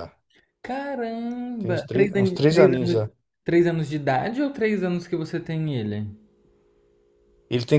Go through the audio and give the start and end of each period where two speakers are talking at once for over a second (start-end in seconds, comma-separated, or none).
1.6-3.0